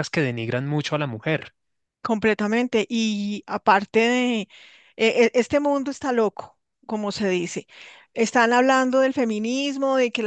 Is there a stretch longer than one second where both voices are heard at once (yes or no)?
no